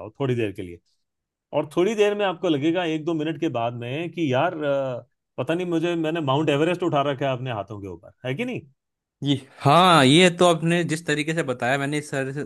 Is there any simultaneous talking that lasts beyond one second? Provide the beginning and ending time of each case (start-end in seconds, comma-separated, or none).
none